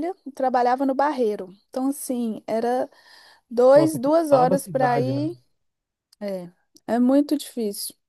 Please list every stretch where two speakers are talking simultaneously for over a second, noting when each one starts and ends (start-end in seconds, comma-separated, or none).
3.7-5.3